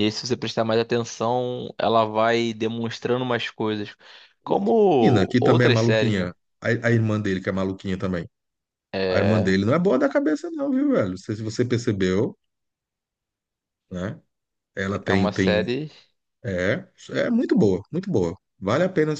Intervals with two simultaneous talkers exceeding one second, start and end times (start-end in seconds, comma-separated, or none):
4.5-6.3